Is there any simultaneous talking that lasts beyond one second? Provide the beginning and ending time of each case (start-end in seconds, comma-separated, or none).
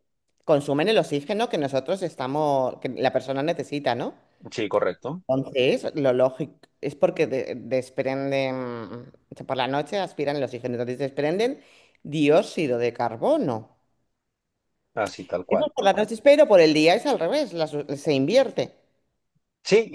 none